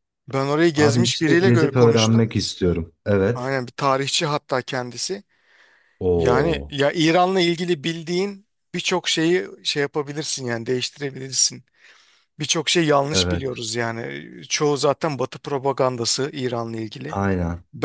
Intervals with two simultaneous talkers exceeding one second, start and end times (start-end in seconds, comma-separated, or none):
0.8-2.3